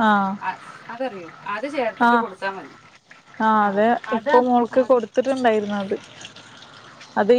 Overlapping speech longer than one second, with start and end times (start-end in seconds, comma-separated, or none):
none